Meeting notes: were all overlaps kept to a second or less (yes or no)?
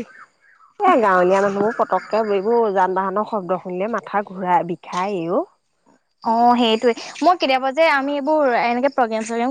yes